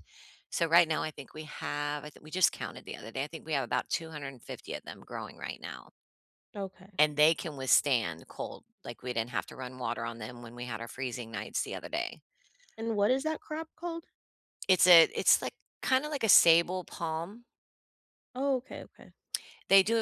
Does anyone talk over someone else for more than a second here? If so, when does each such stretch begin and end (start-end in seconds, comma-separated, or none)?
none